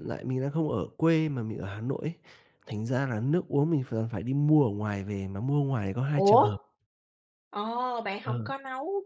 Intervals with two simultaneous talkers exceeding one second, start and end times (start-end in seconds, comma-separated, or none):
none